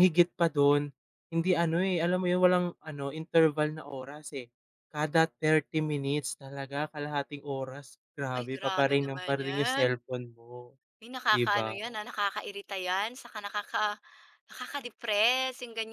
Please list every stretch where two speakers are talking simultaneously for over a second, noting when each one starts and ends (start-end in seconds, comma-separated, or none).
8.4-9.9